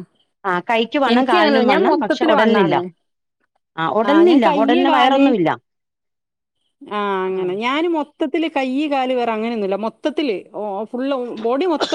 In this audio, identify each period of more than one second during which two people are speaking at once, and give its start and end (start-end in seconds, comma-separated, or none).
1.1-2.8